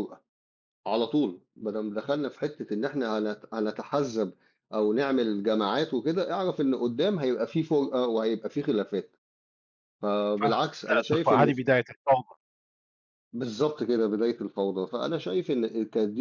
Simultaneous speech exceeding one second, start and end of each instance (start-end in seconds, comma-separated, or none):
10.4-11.6